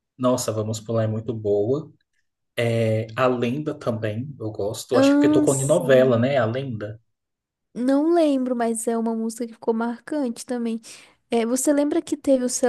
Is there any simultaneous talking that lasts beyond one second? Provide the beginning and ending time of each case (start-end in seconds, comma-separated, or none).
4.9-6.2